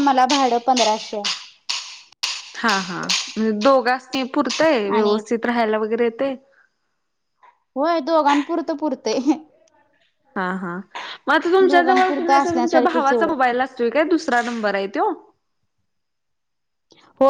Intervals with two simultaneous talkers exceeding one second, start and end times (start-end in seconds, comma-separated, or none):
11.7-13.3